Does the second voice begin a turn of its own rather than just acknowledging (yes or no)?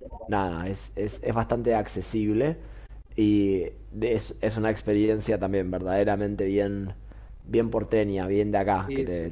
no